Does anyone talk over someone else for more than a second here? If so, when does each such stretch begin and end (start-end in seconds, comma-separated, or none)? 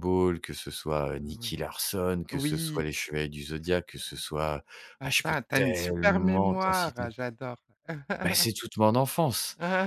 5.0-7.1